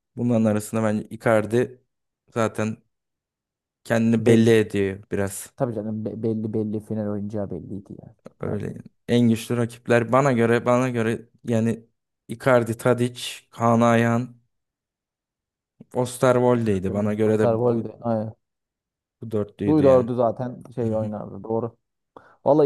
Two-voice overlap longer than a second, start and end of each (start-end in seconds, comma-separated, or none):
16.6-17.9